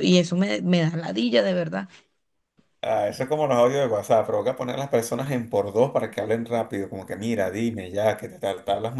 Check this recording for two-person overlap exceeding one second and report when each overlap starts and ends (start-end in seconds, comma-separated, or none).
none